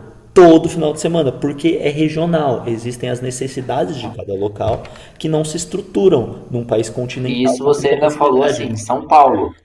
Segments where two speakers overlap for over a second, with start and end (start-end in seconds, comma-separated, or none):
7.2-8.7